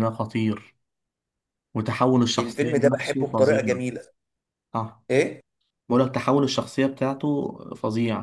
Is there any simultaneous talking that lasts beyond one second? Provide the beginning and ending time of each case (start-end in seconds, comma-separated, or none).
2.4-3.8